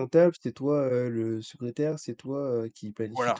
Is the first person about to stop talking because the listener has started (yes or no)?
yes